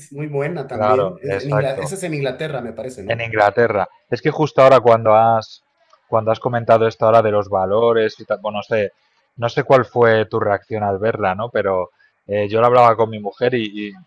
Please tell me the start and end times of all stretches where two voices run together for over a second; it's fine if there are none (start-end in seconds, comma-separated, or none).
0.7-1.9